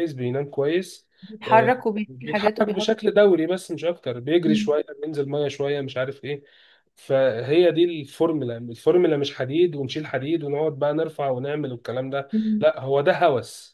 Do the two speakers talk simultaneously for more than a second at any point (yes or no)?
yes